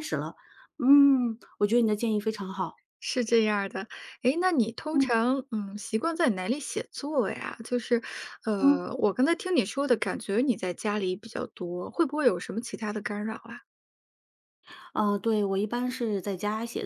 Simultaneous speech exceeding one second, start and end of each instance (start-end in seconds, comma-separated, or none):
none